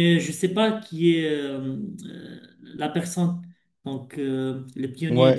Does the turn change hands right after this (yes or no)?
yes